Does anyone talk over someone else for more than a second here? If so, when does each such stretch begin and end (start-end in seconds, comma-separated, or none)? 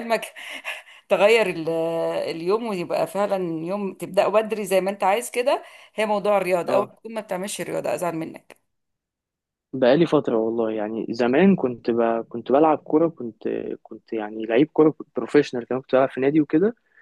none